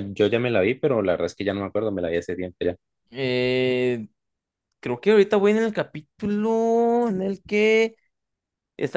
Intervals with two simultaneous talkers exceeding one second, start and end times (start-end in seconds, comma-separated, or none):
none